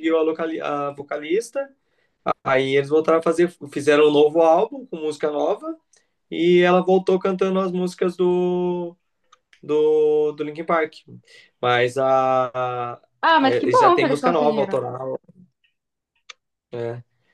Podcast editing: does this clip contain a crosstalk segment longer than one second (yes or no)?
yes